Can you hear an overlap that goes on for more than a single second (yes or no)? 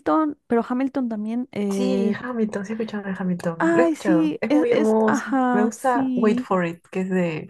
yes